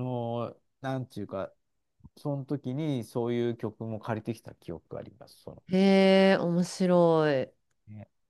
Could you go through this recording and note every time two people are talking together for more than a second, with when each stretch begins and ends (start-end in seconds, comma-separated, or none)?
none